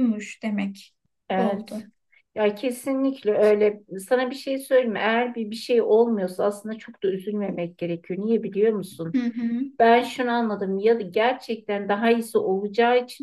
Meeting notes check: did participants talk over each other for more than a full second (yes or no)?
no